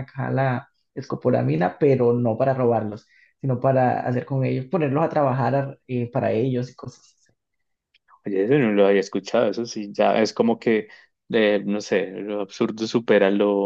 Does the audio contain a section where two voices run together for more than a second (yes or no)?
no